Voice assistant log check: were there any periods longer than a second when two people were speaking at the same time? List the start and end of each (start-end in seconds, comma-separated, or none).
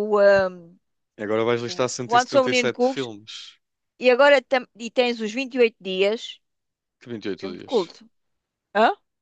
1.7-3.1